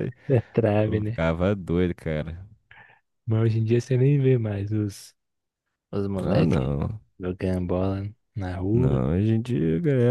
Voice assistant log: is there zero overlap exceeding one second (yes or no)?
yes